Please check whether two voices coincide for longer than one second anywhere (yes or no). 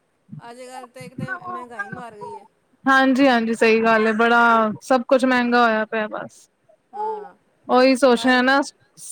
no